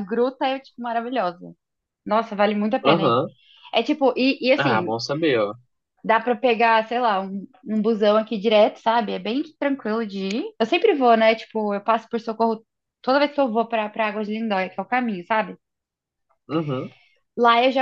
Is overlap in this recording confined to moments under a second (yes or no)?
yes